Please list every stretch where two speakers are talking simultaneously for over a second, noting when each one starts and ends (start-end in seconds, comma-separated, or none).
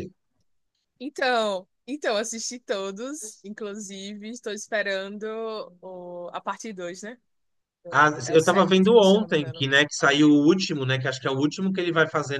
7.9-9.7